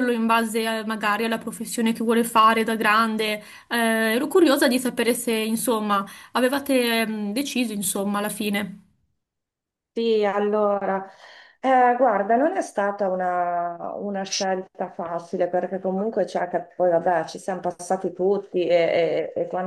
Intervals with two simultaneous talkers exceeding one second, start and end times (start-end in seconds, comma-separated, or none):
none